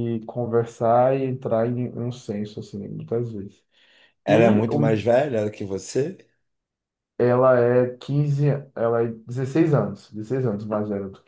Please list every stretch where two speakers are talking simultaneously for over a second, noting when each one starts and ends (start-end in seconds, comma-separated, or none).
none